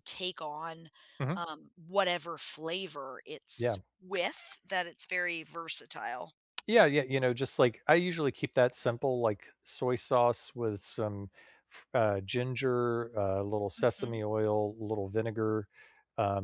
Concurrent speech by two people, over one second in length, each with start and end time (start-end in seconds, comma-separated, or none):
none